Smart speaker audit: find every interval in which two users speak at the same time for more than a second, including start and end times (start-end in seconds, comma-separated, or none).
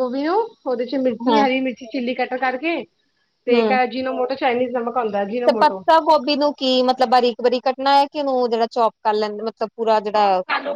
none